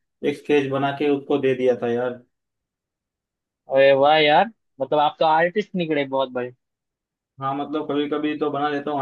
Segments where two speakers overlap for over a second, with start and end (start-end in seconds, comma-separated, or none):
none